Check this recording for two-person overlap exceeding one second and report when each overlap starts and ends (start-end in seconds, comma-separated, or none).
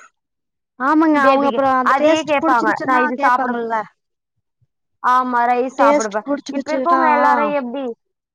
1.3-3.5